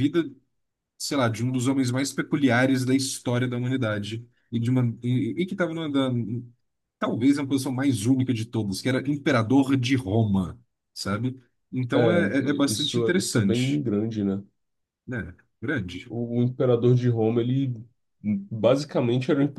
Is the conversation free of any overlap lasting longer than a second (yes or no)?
no